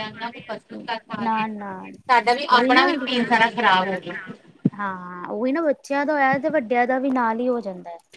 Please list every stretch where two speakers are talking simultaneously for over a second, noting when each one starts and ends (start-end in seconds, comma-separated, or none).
none